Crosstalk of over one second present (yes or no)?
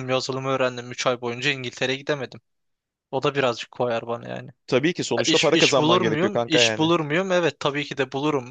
yes